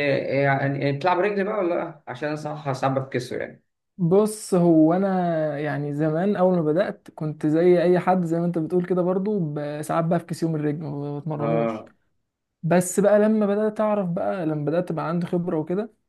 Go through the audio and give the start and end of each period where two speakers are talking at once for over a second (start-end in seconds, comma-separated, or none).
none